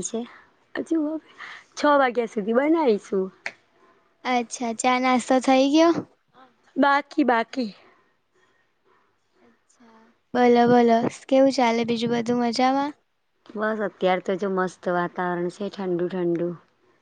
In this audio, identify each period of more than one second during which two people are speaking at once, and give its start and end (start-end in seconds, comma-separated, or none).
none